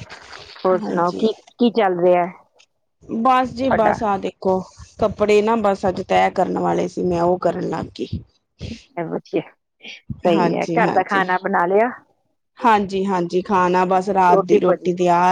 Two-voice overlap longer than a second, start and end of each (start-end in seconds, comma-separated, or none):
none